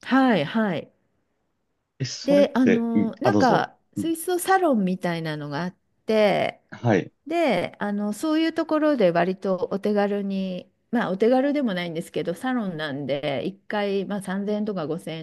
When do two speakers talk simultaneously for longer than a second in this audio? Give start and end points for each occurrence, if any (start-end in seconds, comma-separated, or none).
2.2-4.1